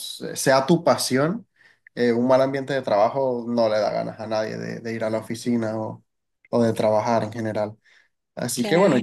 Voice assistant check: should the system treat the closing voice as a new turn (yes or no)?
no